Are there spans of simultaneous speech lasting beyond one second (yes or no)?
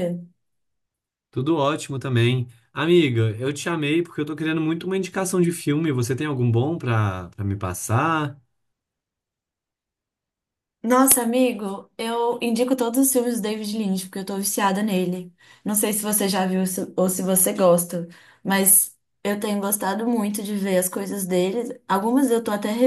no